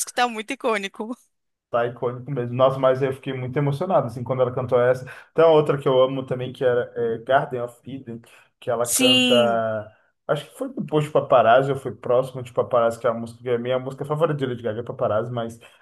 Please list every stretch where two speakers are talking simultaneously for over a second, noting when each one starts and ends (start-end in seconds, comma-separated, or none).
none